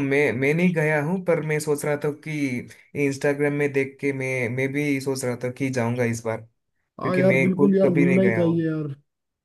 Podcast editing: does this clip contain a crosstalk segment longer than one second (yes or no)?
yes